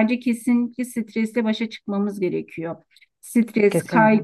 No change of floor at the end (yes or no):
yes